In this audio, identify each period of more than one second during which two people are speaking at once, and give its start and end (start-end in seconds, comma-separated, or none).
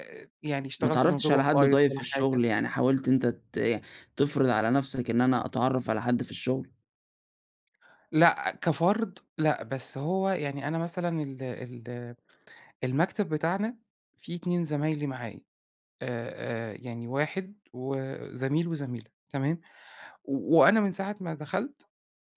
0.8-2.5